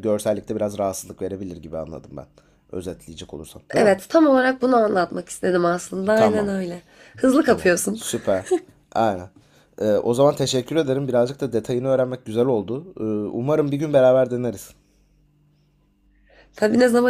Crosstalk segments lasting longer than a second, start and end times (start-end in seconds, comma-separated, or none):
none